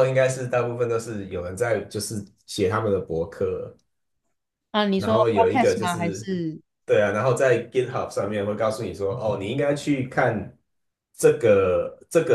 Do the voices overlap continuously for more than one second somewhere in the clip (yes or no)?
yes